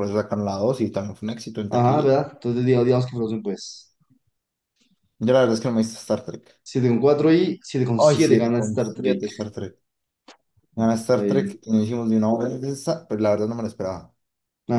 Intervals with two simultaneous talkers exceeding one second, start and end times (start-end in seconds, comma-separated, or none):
8.0-9.3